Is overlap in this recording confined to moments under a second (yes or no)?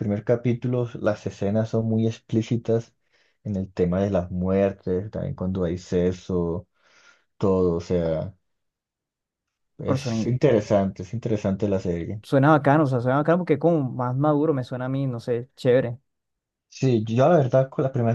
yes